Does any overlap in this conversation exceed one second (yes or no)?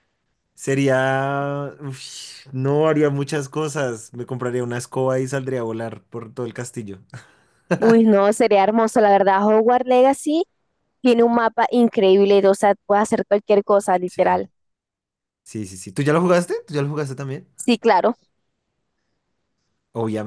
no